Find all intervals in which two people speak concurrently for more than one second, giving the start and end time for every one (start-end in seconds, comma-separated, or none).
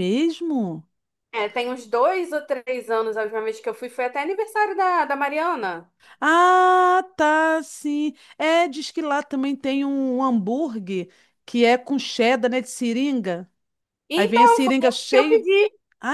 14.2-15.5